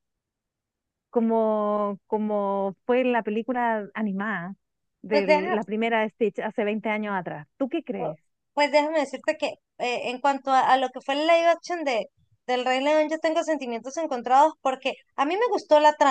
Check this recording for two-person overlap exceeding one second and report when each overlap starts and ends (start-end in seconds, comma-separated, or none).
none